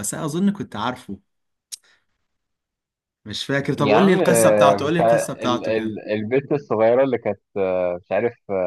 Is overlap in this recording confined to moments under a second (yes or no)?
no